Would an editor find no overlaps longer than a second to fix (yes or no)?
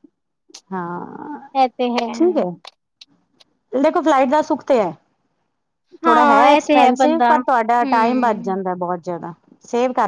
no